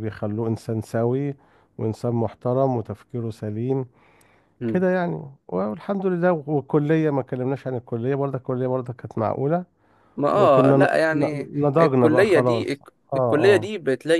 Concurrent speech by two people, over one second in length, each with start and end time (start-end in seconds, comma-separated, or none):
10.3-13.7